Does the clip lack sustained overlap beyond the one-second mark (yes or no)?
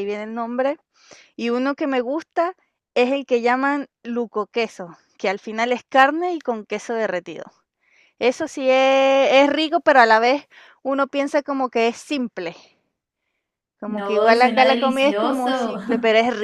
no